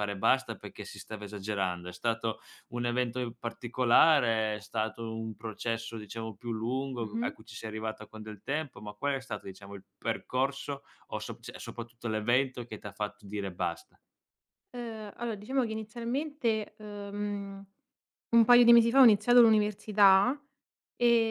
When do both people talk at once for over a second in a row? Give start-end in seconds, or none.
none